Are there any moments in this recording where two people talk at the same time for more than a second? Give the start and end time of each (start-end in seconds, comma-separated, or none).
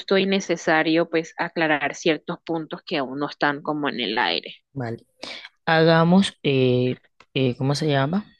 none